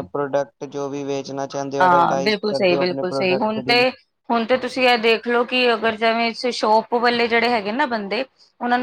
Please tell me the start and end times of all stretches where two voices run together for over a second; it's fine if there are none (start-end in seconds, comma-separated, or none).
1.8-3.9